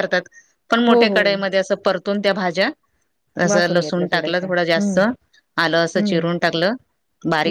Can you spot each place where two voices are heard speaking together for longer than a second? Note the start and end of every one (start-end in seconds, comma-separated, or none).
3.5-5.0